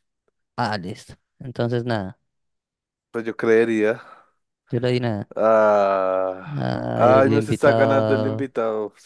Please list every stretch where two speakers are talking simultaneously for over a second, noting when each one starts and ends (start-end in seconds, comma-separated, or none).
6.9-8.5